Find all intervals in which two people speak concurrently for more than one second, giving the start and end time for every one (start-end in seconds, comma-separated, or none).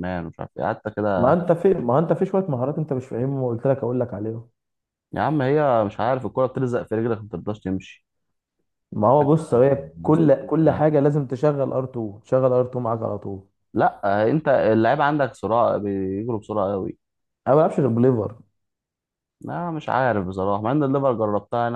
none